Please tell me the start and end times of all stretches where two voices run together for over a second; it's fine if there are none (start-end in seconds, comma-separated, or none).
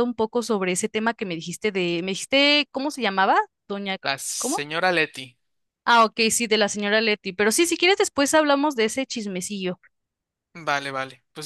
none